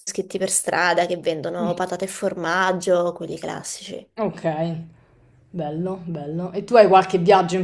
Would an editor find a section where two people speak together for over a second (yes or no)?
no